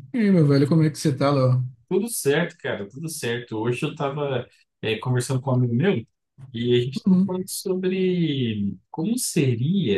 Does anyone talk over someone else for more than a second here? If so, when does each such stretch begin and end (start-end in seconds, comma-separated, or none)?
none